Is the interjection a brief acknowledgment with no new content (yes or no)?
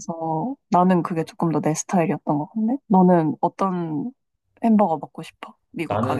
no